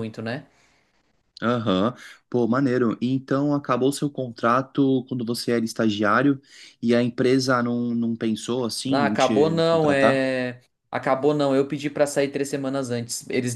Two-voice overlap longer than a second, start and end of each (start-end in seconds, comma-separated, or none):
8.9-10.2